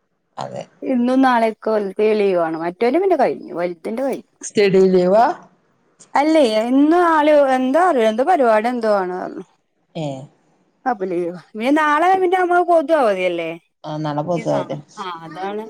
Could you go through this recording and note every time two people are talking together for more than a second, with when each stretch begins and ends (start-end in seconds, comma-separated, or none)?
none